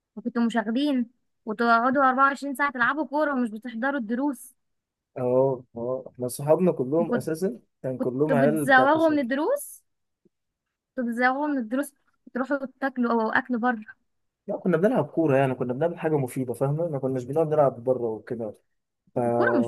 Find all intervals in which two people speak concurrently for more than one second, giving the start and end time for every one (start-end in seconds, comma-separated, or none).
8.0-9.3